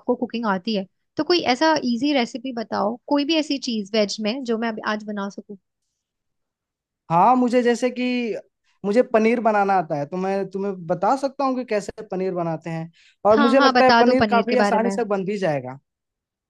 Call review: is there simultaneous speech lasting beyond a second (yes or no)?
yes